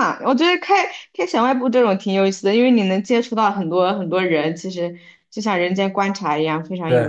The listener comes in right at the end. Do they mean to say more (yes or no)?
yes